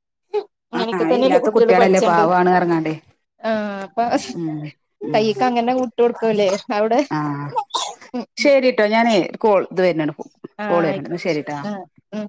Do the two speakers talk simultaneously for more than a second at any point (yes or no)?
yes